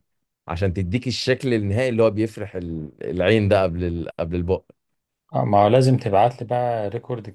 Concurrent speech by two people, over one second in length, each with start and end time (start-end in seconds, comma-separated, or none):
none